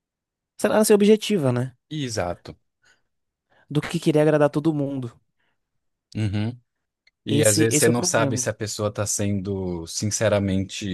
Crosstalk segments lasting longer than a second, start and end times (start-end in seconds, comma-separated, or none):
7.3-8.5